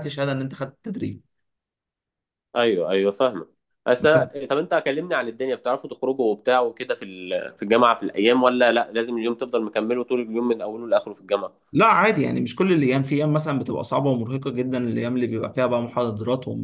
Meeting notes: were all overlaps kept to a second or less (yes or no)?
yes